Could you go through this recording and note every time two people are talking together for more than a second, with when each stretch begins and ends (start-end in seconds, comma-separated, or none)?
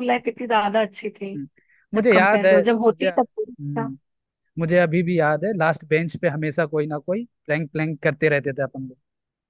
1.9-3.9